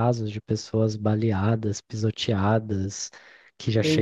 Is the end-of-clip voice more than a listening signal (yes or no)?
no